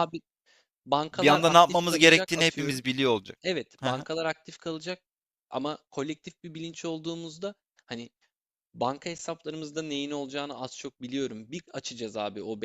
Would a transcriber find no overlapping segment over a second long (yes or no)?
no